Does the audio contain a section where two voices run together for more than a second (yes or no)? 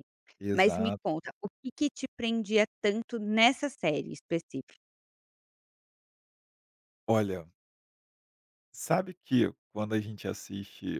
no